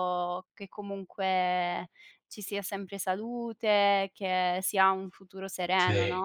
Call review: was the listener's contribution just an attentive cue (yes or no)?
no